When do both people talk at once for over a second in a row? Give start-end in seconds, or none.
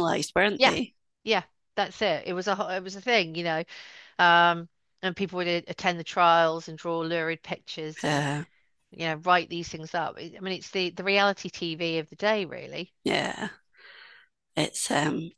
none